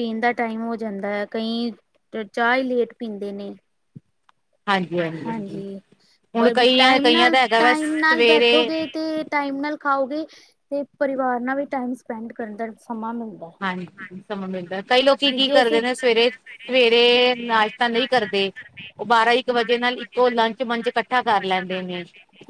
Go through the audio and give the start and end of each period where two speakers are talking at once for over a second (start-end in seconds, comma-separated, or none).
6.4-8.7